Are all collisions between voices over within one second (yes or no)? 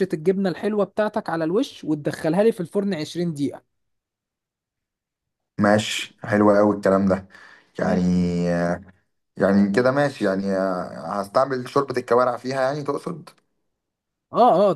yes